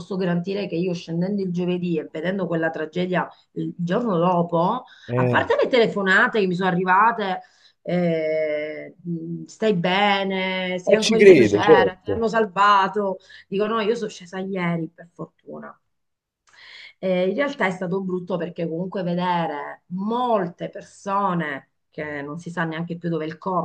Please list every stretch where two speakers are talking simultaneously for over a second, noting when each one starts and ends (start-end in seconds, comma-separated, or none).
10.8-12.2